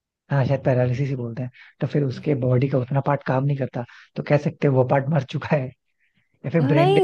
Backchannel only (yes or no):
no